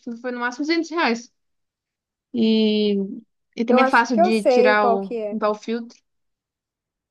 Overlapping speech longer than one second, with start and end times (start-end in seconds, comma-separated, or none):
3.7-5.4